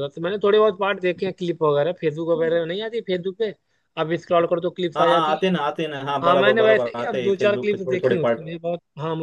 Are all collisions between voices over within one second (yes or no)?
no